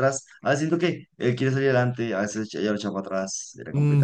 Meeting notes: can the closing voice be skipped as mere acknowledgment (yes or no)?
no